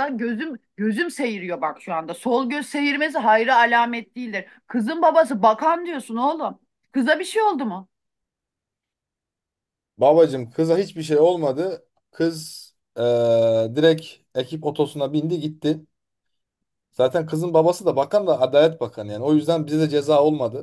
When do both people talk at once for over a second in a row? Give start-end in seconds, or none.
none